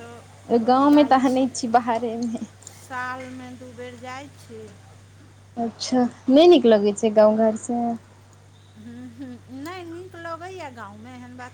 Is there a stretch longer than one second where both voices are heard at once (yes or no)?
no